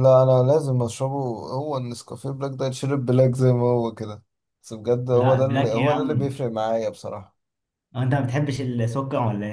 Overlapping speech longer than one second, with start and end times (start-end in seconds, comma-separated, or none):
5.1-6.3